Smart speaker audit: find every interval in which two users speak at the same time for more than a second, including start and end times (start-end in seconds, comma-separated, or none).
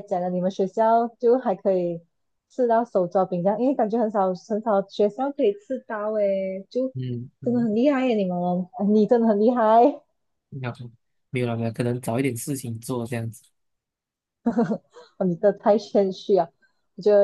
none